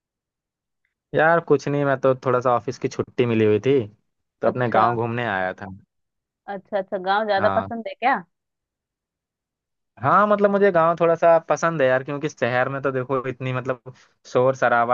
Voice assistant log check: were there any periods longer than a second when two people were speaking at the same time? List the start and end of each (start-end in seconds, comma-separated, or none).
none